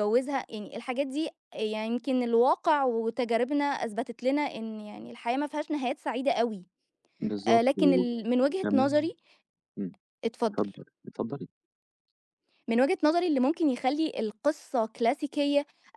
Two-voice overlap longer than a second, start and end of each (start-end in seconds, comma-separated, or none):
7.5-9.1